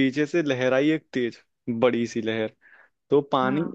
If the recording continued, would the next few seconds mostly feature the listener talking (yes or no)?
no